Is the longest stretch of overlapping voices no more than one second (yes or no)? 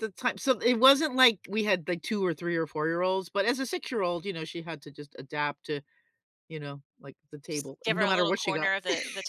no